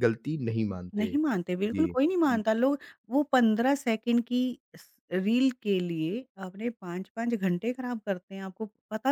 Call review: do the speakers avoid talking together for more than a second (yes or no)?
no